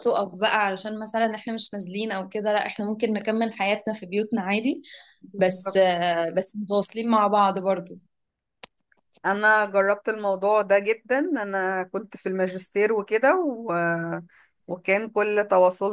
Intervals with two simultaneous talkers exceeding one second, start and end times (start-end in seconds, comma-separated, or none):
none